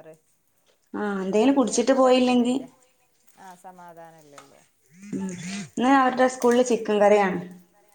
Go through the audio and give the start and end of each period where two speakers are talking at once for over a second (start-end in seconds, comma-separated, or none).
1.2-2.5